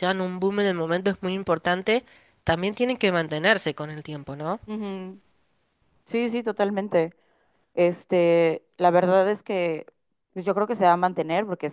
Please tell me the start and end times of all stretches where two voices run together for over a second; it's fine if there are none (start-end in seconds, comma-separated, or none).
none